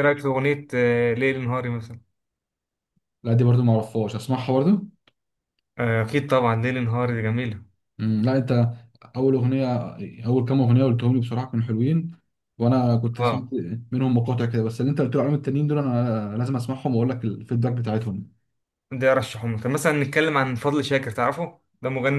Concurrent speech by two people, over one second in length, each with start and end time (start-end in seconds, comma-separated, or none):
none